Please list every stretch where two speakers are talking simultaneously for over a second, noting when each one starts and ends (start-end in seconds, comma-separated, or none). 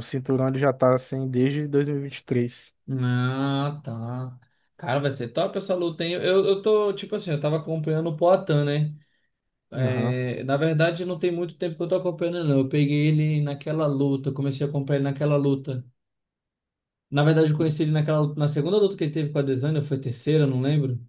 none